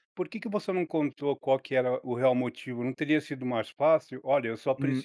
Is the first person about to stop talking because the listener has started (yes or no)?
yes